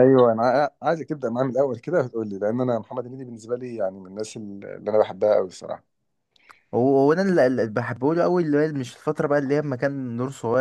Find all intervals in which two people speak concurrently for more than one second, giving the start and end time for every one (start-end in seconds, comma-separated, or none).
none